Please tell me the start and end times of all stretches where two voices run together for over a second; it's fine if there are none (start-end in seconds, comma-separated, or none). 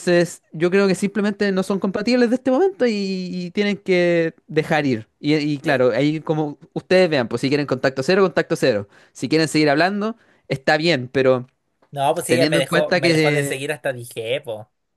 12.3-13.6